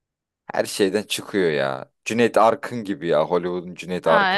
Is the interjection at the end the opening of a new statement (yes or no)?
yes